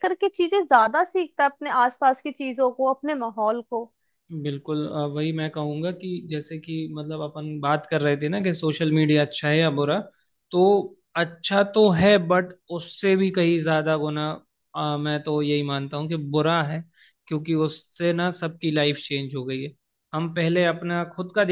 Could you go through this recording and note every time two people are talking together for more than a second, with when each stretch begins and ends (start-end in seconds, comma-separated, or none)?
none